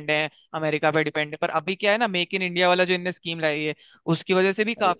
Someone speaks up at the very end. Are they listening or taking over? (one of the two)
listening